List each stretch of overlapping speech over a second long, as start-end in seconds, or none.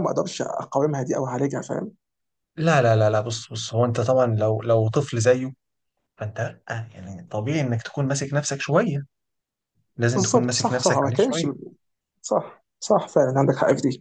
10.1-11.5